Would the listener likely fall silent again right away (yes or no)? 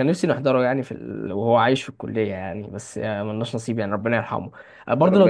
yes